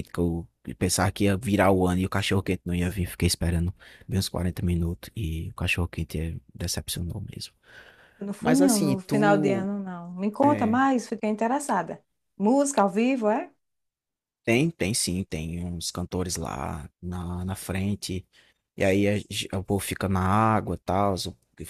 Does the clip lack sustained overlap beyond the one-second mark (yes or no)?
no